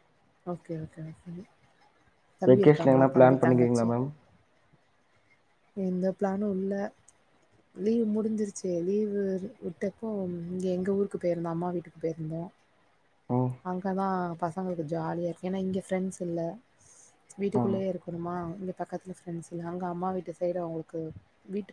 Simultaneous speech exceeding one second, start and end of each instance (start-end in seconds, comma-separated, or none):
2.5-3.9